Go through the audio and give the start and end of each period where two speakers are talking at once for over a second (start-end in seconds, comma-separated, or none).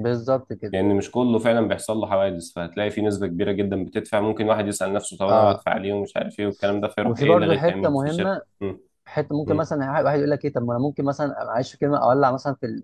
7.0-8.4